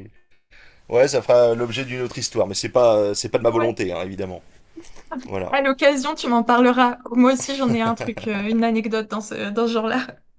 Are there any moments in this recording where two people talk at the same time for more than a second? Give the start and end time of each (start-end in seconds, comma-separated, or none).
none